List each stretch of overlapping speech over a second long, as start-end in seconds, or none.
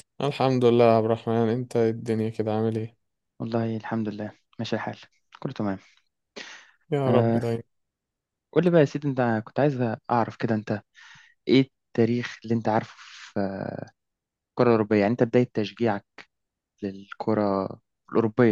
none